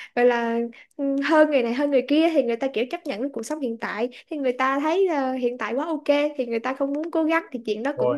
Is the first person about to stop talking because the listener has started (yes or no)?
no